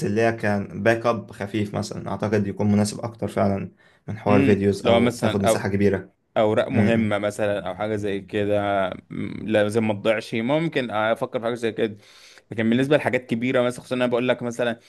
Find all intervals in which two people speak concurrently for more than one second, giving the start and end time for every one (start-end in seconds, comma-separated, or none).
4.3-5.8